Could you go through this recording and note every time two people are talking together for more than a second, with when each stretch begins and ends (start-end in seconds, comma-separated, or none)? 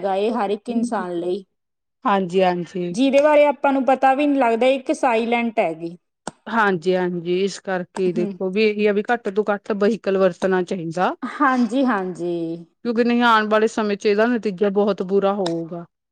none